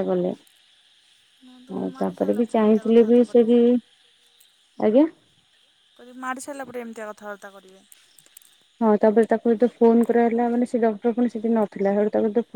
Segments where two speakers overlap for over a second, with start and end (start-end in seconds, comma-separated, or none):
1.8-3.5